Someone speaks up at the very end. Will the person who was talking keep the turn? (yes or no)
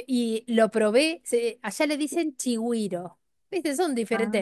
yes